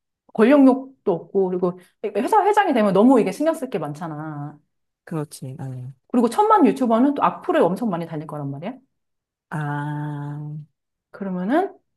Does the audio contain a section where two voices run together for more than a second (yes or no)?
no